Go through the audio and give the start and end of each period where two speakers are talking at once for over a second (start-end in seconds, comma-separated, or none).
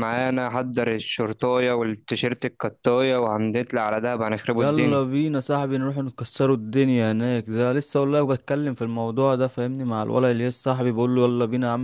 none